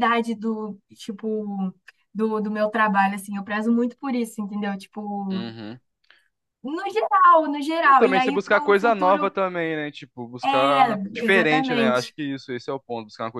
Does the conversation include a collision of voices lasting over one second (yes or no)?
yes